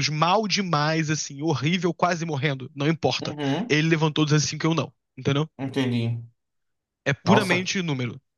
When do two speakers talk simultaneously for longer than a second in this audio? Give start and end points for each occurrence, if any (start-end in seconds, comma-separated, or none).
none